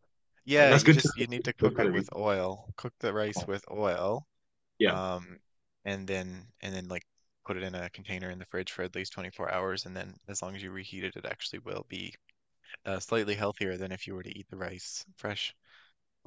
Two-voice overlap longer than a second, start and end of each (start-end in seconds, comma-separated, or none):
0.6-2.1